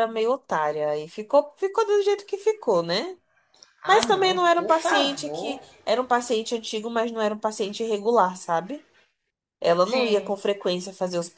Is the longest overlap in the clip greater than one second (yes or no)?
yes